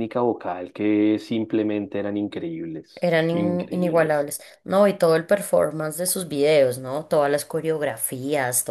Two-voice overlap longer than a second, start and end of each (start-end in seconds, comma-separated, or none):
3.0-4.3